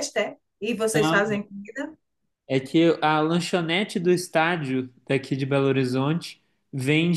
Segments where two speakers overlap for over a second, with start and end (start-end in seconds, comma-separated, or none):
none